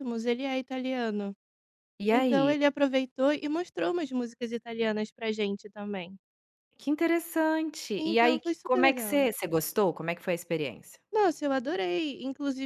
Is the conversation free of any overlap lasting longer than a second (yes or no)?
no